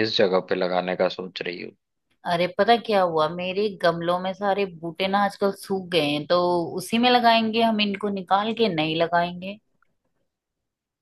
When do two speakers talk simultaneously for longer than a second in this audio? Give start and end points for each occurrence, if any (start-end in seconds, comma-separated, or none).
none